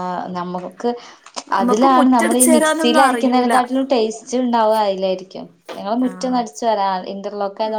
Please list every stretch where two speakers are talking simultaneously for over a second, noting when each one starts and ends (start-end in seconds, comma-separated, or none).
1.6-3.5